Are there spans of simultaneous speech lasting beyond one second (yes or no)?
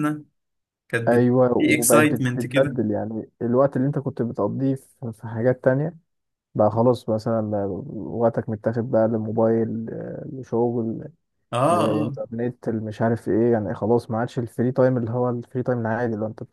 yes